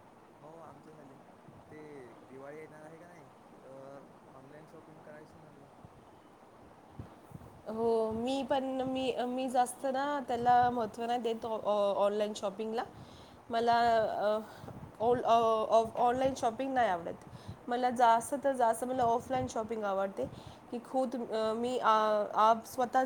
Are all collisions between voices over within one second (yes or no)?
yes